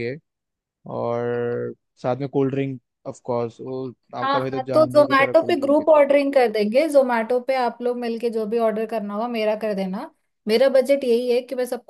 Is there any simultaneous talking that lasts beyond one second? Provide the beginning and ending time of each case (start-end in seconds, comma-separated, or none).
4.2-6.0